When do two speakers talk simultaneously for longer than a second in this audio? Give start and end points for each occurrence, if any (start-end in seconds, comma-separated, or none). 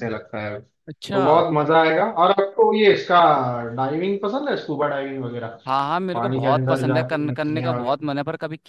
6.1-7.7